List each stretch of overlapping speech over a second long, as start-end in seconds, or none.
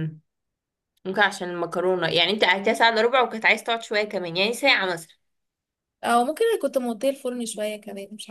none